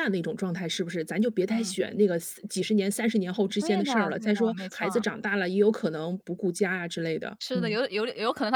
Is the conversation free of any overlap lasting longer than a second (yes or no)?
no